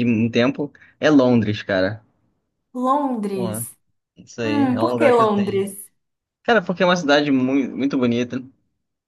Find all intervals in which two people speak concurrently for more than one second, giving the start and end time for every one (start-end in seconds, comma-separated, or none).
4.4-5.7